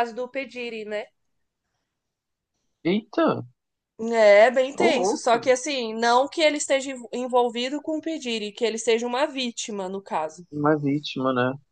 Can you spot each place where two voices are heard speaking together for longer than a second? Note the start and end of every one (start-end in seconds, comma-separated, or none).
none